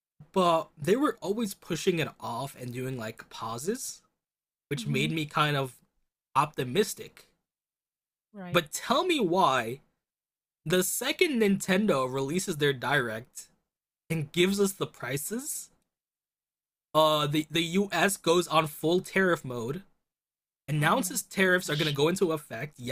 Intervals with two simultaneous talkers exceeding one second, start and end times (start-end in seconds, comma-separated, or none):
20.8-22.0